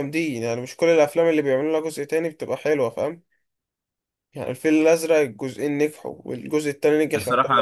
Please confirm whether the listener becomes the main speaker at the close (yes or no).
yes